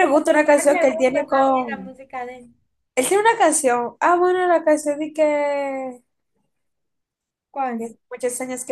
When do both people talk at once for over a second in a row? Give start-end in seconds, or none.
0.6-1.9